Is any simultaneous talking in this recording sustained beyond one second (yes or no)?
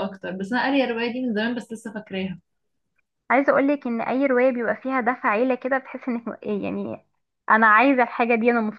no